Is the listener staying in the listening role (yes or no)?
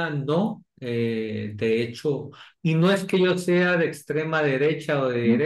yes